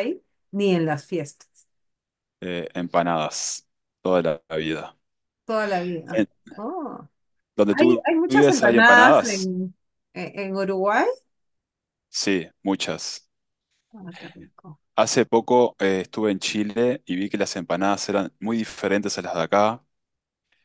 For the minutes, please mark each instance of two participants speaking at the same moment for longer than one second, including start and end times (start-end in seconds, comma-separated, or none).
7.7-9.5